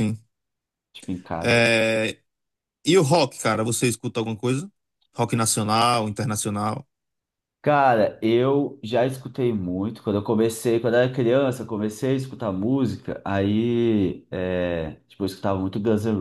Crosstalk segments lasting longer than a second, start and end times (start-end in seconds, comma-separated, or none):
none